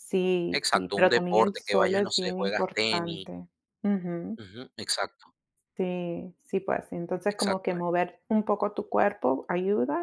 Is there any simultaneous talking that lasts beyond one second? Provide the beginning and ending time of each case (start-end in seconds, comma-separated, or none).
0.5-3.3